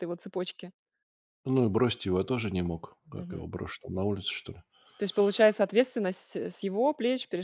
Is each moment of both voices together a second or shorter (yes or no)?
yes